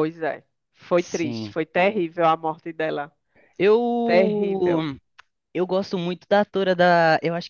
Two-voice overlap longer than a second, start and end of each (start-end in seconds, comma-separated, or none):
none